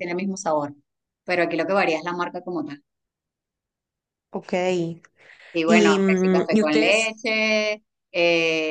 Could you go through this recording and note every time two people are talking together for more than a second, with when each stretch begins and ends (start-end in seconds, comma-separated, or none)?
5.7-7.2